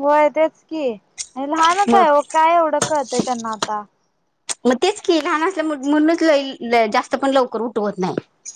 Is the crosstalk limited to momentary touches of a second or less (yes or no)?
yes